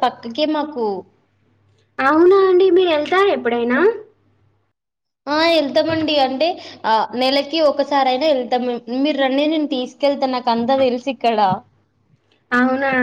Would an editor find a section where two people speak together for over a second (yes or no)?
no